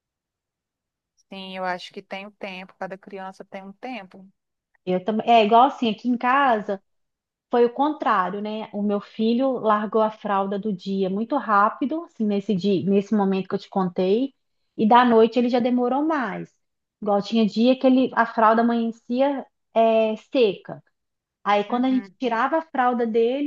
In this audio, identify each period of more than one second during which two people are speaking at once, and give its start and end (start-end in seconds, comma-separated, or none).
none